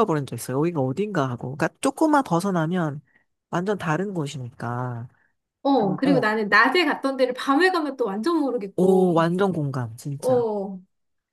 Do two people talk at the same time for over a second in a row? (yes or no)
no